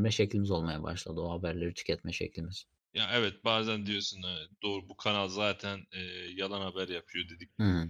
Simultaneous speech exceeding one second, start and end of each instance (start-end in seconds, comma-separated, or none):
none